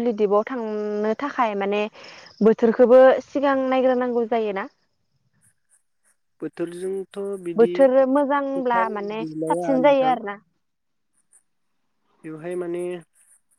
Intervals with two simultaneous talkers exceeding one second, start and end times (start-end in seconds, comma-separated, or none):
8.1-10.1